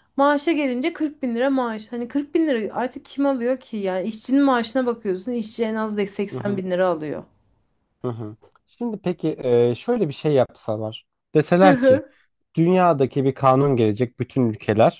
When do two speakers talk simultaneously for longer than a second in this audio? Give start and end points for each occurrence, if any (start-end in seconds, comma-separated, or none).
none